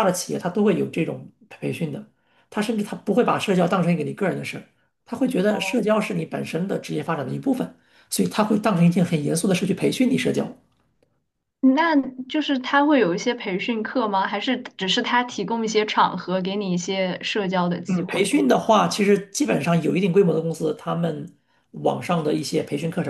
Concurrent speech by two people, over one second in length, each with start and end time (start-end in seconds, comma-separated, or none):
none